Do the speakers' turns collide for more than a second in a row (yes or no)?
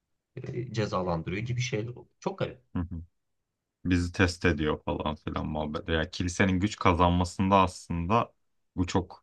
no